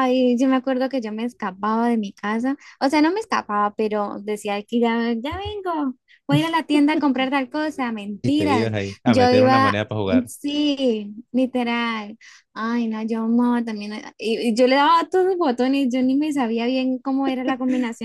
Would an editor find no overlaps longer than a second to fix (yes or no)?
no